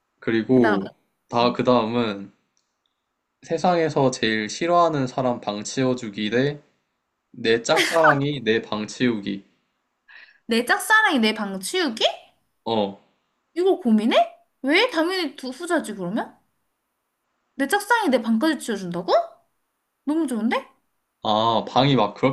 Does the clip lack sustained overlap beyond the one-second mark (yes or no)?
yes